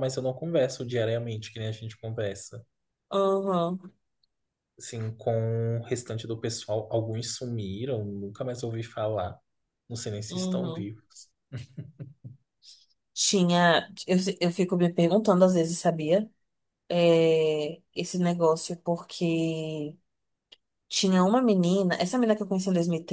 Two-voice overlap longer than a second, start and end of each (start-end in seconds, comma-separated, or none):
none